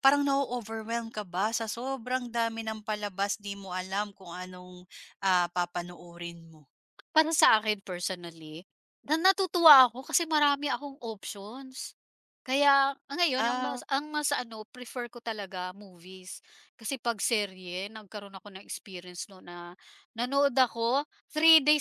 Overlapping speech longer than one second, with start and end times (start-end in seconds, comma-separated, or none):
none